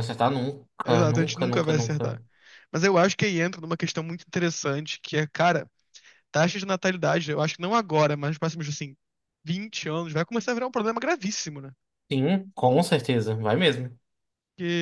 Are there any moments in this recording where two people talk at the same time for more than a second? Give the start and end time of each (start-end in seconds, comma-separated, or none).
0.8-2.2